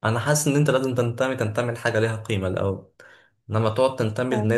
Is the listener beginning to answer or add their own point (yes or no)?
no